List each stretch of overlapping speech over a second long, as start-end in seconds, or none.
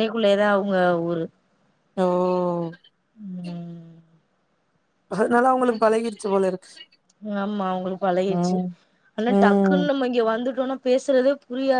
none